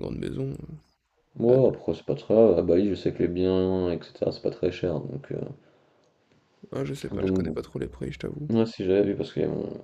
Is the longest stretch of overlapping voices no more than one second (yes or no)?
yes